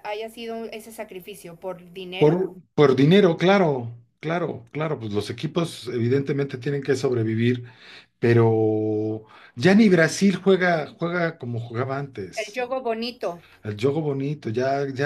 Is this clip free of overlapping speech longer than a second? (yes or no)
yes